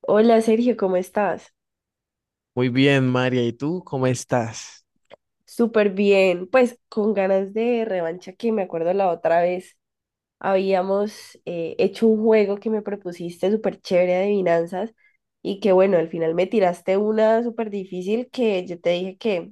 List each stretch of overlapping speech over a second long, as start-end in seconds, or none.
none